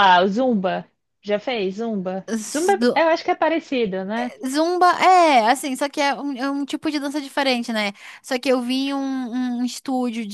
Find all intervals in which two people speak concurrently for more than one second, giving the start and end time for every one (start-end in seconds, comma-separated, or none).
none